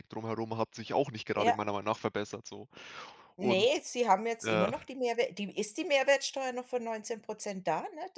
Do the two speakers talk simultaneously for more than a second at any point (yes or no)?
no